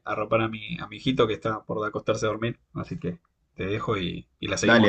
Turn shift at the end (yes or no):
yes